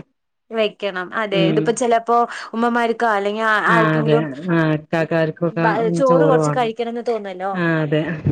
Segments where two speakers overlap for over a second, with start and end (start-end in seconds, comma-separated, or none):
none